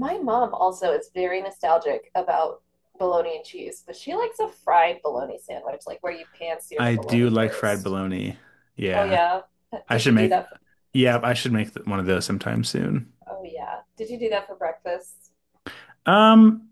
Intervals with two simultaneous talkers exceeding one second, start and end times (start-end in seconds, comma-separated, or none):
6.8-8.0